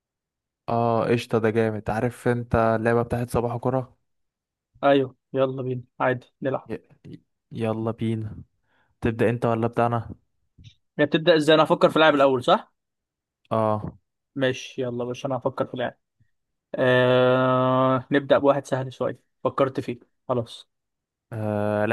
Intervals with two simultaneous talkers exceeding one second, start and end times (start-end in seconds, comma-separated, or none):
none